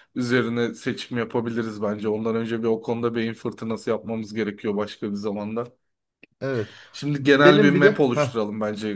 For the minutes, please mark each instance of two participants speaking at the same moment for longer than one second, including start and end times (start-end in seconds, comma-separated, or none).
7.2-8.4